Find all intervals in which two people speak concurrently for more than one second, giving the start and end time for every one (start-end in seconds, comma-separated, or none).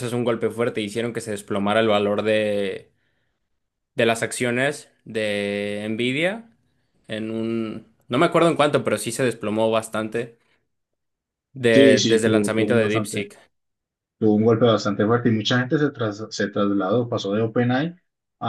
11.7-13.3